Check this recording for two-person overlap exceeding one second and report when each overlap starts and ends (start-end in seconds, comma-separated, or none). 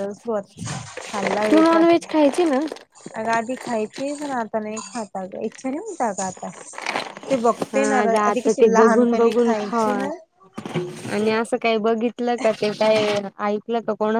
7.7-10.0